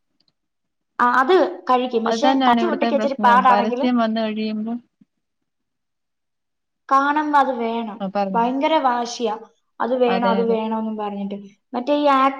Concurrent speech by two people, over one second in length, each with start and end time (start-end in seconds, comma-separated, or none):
2.1-3.9